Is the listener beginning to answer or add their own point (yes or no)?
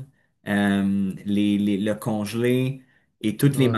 no